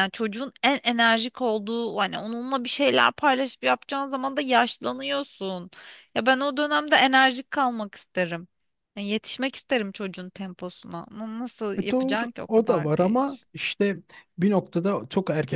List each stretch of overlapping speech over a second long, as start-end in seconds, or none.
11.8-13.5